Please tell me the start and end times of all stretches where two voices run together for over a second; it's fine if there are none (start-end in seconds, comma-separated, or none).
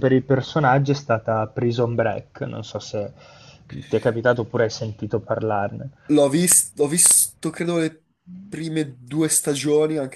none